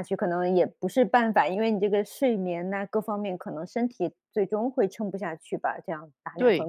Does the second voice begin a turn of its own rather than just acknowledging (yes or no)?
yes